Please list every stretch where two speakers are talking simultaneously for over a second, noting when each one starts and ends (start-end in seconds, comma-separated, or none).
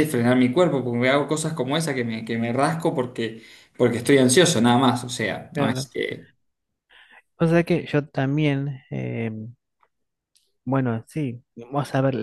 none